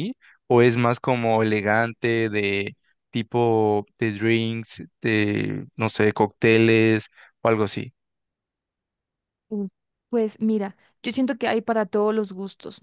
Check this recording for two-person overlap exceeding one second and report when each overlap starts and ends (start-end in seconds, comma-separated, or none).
none